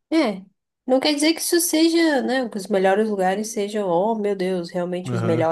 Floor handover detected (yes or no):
no